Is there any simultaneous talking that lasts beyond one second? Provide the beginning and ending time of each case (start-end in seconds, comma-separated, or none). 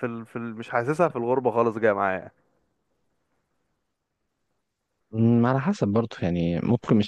none